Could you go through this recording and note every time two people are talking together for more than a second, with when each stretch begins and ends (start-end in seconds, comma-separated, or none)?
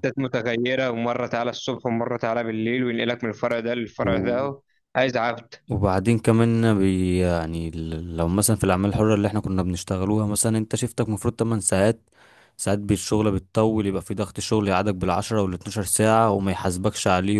none